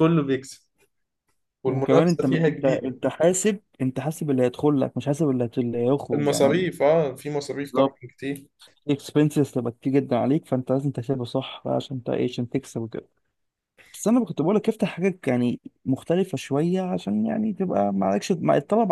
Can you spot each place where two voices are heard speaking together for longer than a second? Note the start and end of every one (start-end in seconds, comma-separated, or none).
1.7-3.0